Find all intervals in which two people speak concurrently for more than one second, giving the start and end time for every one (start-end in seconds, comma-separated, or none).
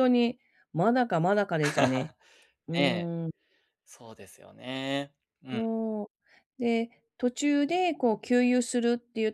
none